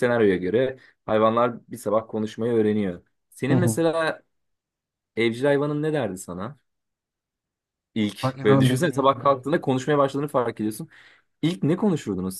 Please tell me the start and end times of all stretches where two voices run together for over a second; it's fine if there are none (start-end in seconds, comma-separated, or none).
8.2-9.4